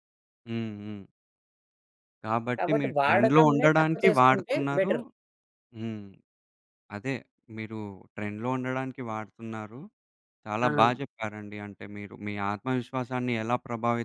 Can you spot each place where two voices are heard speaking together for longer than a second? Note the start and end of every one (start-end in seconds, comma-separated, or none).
2.6-4.9